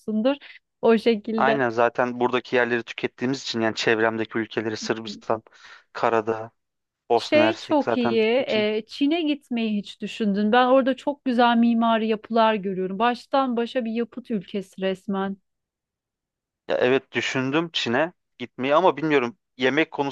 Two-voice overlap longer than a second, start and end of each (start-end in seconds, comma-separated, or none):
7.2-8.7